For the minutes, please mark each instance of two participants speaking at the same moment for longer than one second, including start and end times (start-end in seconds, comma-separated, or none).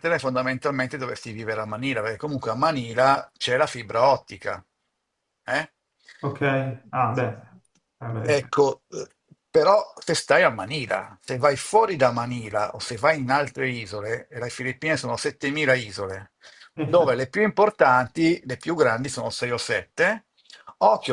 none